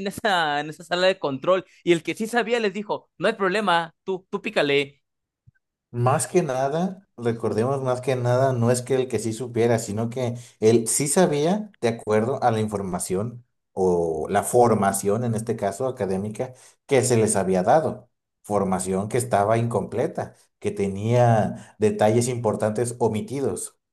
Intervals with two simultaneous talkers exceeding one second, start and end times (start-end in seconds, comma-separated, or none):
none